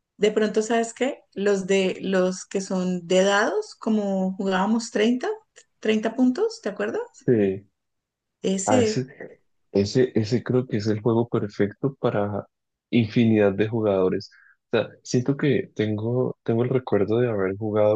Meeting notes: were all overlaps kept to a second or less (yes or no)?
yes